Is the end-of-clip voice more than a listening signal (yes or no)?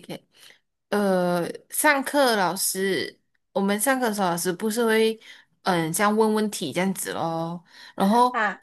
no